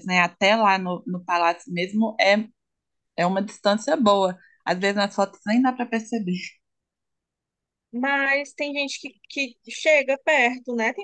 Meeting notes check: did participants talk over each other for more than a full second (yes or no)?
no